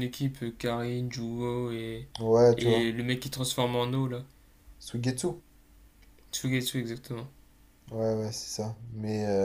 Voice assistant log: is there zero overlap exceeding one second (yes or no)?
yes